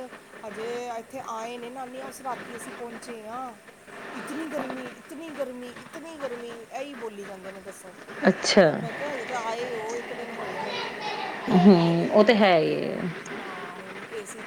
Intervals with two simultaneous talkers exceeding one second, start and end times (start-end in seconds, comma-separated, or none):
11.5-12.9